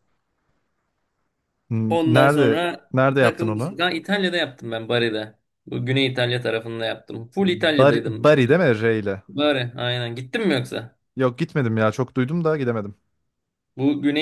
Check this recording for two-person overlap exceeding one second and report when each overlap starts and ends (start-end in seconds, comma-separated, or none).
1.9-3.8